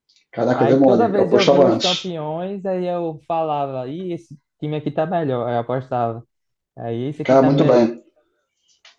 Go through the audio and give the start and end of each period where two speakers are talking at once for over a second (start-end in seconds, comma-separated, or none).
0.6-1.9